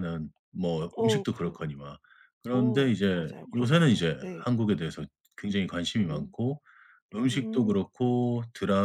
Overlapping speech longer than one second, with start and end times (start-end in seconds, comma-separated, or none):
2.5-4.5